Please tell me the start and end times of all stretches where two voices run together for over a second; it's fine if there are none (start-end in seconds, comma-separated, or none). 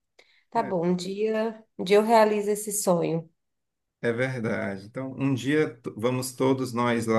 none